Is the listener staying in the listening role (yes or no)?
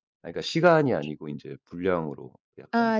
yes